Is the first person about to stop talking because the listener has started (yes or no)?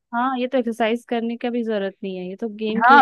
yes